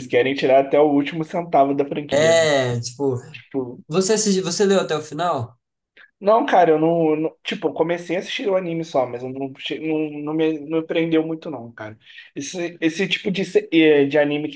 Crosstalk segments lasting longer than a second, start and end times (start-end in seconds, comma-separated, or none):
none